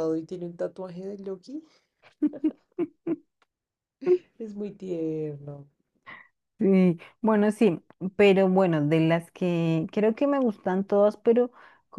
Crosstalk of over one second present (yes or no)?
no